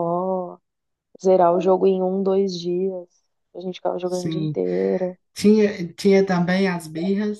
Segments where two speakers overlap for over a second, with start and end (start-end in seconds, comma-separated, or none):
none